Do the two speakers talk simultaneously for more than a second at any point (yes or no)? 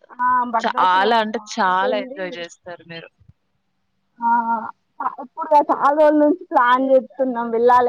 yes